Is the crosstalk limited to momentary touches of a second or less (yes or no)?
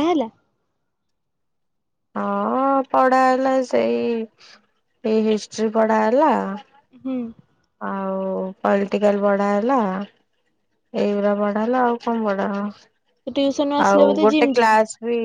no